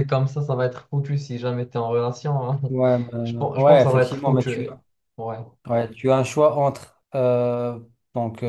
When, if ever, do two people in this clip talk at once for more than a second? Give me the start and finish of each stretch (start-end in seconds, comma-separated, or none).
3.2-4.7